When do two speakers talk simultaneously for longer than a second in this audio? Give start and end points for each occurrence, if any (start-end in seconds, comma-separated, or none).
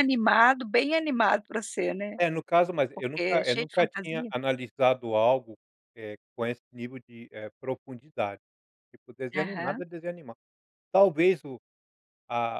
2.9-4.3